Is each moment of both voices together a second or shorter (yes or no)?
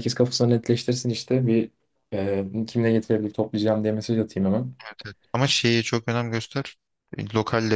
yes